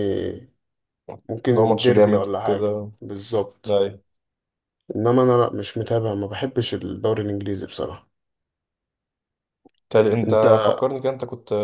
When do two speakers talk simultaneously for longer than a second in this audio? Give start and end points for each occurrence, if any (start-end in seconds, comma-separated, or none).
1.4-2.9